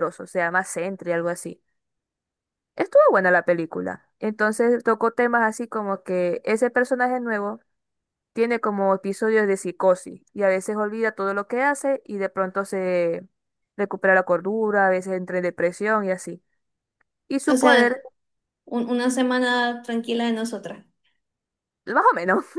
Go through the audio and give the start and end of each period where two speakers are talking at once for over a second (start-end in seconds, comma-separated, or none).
none